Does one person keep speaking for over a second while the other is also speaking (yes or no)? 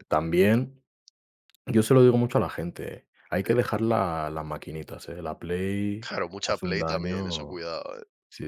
yes